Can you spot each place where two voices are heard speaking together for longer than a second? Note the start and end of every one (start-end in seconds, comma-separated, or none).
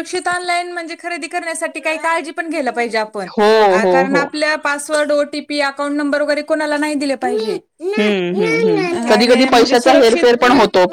9.1-10.4